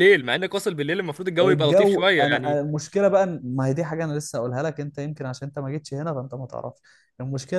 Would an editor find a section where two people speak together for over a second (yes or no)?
yes